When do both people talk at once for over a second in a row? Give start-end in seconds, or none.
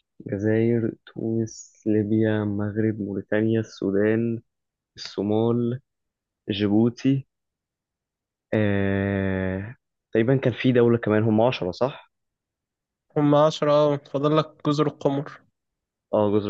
none